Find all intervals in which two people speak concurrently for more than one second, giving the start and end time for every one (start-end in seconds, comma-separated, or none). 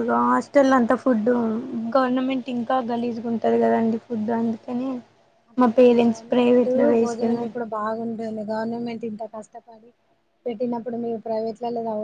5.6-7.5